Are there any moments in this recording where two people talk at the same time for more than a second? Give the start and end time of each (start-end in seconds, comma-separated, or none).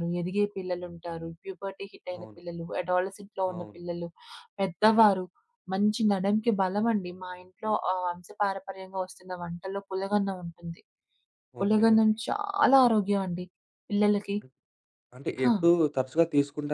none